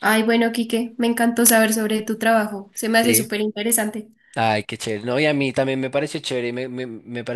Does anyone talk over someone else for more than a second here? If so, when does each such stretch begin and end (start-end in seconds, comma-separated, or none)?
none